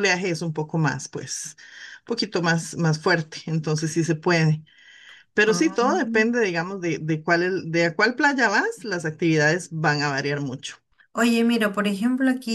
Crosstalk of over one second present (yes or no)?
no